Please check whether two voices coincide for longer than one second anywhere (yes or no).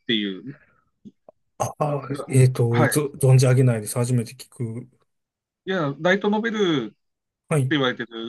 no